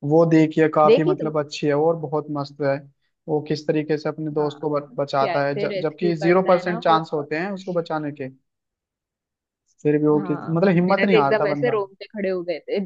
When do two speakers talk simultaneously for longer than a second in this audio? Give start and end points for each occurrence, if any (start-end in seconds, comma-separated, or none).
5.2-7.0, 10.2-11.8